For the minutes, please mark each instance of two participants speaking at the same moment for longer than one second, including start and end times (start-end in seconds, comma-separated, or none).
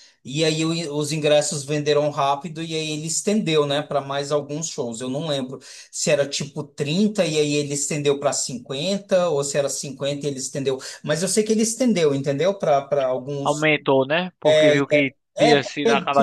none